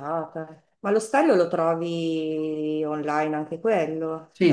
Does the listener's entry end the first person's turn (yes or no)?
yes